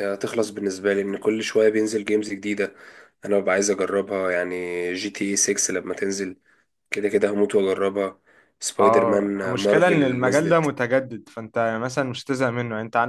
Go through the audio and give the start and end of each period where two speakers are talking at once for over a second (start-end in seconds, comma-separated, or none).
8.8-10.7